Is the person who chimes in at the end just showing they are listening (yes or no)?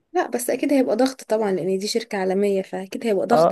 no